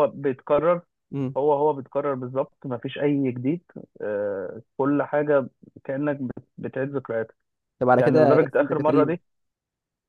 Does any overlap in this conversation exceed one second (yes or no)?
yes